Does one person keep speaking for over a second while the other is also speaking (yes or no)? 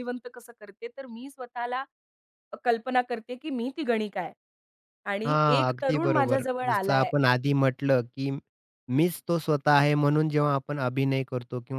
yes